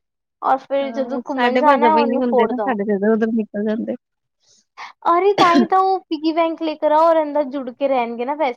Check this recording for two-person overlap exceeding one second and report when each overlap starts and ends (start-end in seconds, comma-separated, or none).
0.8-2.8